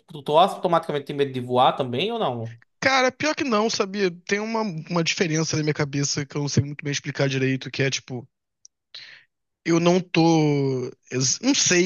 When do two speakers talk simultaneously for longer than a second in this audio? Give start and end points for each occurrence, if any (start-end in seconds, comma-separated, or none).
none